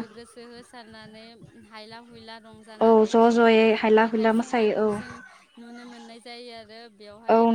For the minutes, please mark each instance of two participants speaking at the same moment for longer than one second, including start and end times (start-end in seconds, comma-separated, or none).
2.9-5.1